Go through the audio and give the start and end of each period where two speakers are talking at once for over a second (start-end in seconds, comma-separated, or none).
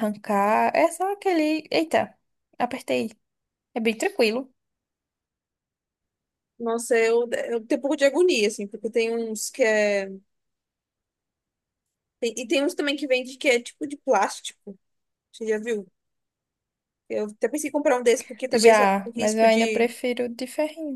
18.5-19.9